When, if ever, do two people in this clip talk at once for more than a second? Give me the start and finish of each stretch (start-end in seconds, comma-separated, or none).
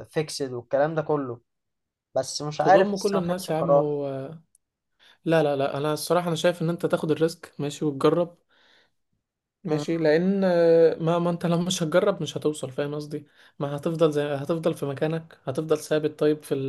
2.6-4.0